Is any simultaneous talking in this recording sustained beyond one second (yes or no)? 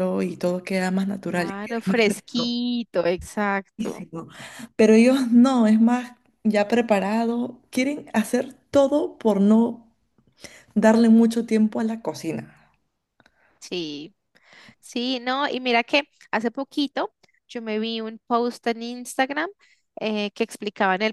yes